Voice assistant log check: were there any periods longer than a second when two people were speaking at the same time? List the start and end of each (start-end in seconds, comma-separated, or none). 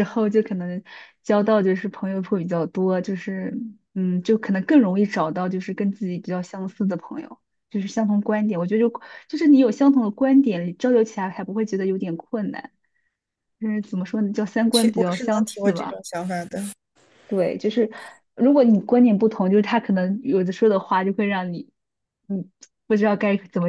14.7-16.0